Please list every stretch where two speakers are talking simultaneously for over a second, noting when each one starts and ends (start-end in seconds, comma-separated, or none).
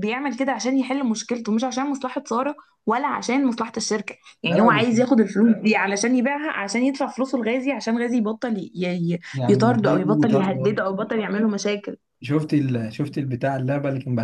9.3-10.7